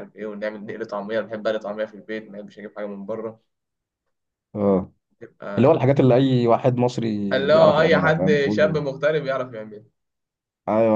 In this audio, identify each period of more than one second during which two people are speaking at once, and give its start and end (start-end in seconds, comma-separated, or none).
7.3-8.8